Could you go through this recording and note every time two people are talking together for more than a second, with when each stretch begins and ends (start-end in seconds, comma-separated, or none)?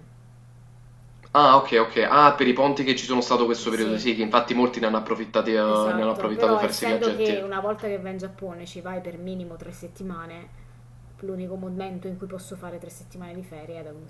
6.0-7.4